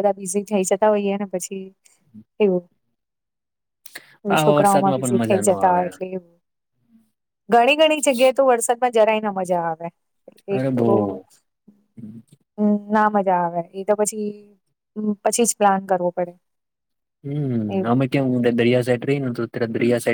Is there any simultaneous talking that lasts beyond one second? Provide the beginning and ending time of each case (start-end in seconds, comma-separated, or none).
4.4-5.8